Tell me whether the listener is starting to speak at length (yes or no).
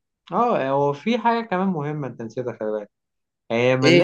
no